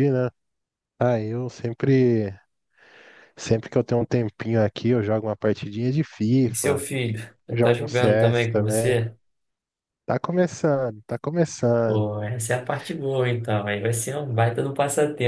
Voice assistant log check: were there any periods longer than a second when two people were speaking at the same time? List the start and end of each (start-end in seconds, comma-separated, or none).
7.5-8.9